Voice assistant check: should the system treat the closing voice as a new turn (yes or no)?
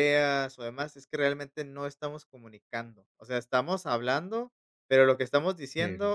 no